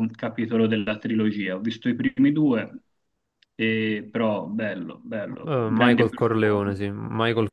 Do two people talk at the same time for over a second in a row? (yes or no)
yes